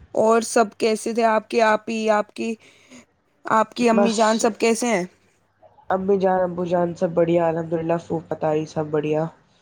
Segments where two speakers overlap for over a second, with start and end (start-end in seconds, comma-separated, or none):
none